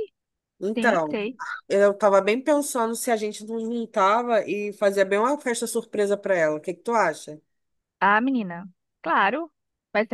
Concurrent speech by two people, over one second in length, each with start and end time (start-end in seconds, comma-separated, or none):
none